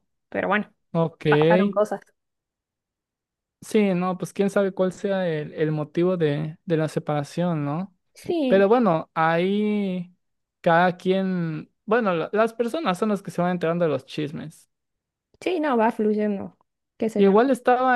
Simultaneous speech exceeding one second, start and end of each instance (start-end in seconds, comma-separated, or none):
none